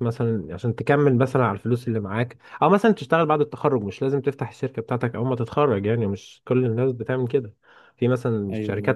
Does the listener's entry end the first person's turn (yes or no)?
no